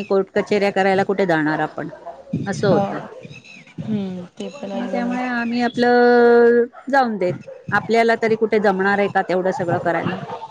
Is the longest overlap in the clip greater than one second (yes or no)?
no